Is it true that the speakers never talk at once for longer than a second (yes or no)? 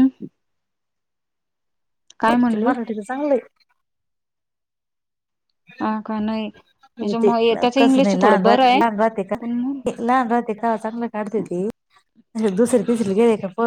no